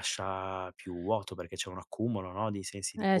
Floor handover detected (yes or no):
yes